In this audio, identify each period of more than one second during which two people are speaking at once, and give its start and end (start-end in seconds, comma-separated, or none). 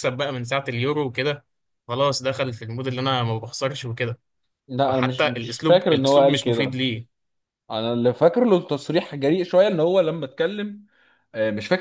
4.8-6.8